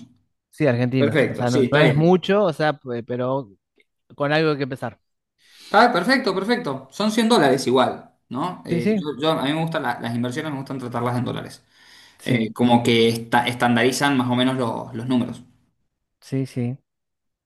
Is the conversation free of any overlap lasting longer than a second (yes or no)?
no